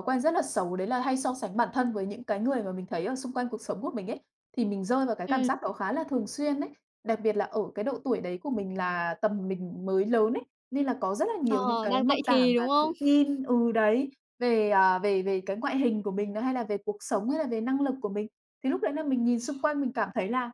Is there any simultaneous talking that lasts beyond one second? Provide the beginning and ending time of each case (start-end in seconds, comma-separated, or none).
11.5-12.9